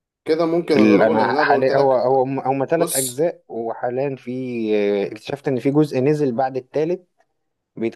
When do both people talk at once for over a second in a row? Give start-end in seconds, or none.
0.8-2.1